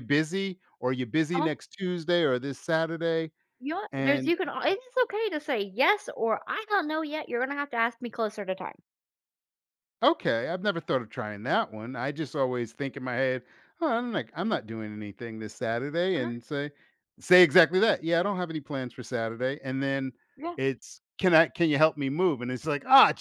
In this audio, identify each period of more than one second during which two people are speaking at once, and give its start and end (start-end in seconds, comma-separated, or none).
none